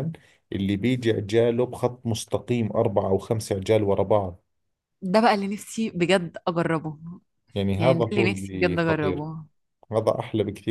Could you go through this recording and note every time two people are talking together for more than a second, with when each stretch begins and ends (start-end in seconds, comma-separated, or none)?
7.8-9.3